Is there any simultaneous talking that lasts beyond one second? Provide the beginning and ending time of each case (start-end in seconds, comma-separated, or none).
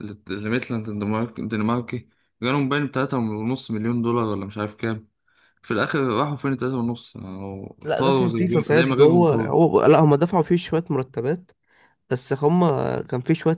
7.8-9.5